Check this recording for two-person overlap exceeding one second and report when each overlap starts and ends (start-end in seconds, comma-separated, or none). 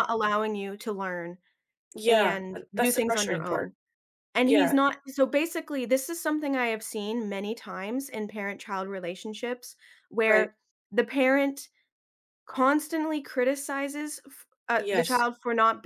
2.1-3.7